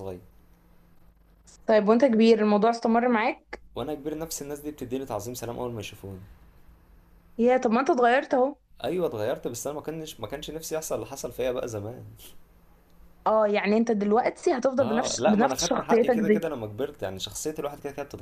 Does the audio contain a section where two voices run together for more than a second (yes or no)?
yes